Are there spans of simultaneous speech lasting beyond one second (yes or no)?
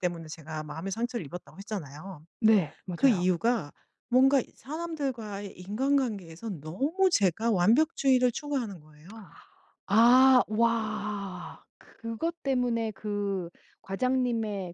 no